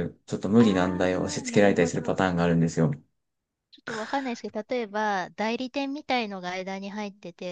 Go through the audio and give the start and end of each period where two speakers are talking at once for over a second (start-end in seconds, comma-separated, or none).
0.6-2.5